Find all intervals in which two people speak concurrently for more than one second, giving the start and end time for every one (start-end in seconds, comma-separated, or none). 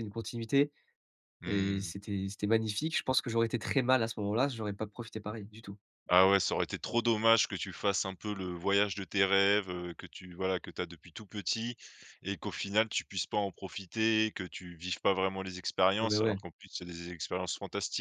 none